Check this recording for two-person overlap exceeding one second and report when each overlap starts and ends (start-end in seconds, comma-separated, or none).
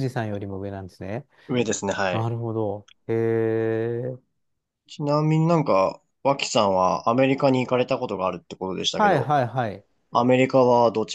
none